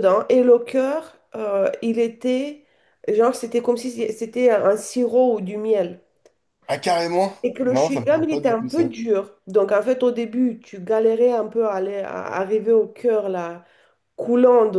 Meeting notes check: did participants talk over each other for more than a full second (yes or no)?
yes